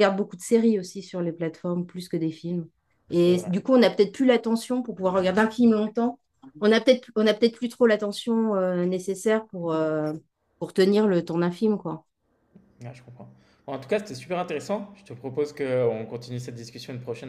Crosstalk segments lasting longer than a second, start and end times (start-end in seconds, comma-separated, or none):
none